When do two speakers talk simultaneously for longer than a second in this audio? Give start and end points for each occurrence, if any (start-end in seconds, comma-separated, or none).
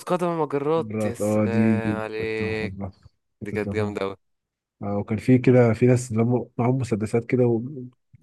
0.8-2.9